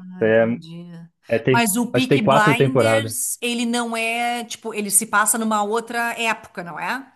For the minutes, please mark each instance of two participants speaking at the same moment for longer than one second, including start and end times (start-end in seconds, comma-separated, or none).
1.5-3.1